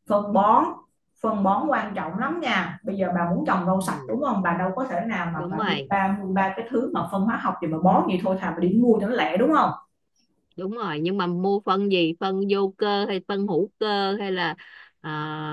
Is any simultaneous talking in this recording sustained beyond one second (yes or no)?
no